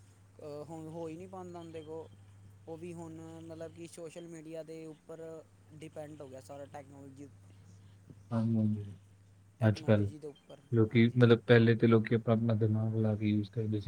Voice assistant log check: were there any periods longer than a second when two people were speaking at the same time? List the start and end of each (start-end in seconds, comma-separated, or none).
none